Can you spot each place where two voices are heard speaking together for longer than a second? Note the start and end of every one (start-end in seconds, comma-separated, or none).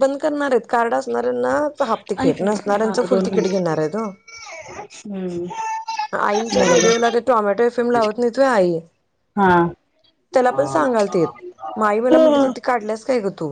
2.2-3.6